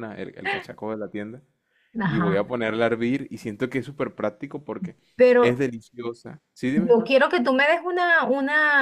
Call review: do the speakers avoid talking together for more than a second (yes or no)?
yes